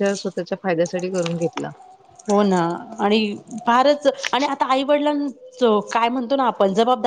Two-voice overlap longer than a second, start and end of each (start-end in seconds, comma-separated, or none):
none